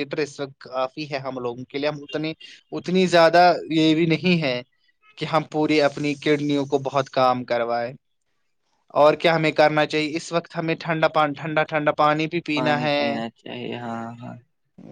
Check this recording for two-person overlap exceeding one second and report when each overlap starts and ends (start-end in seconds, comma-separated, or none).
none